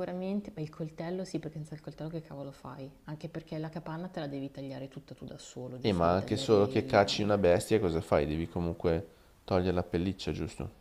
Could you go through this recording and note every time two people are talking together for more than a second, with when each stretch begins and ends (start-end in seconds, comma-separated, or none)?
5.8-7.3